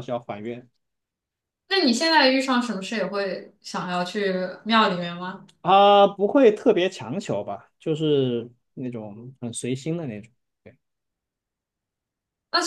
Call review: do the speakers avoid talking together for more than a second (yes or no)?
yes